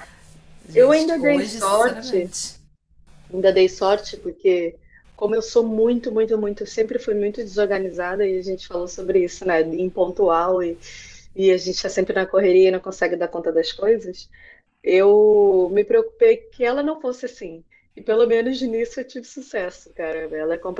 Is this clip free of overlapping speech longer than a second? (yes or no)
no